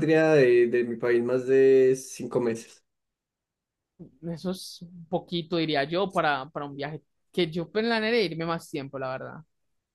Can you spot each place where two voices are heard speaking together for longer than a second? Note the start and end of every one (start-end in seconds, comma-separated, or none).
none